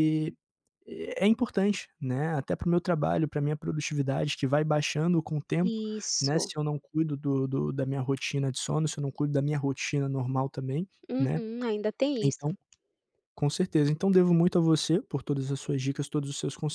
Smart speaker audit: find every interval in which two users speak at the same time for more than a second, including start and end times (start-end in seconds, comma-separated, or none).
none